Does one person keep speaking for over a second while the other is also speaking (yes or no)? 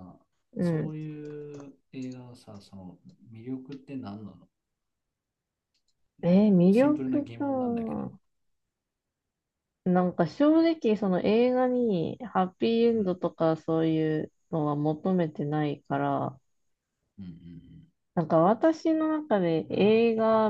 yes